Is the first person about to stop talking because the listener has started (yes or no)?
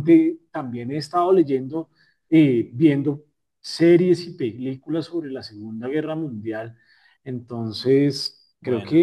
no